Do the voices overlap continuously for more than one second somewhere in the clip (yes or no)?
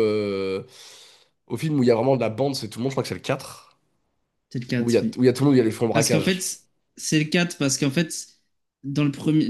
no